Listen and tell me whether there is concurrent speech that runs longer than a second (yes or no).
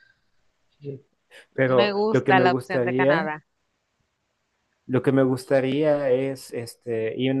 yes